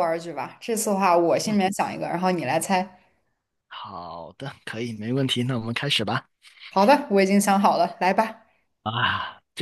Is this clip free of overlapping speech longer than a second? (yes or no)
yes